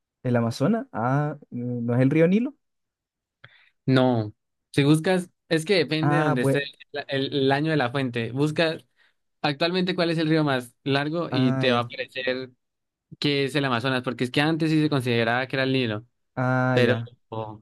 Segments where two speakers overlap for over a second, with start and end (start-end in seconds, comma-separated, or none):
none